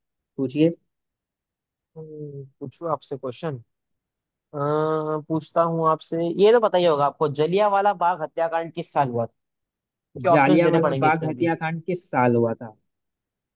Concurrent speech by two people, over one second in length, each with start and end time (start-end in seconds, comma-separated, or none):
10.3-11.5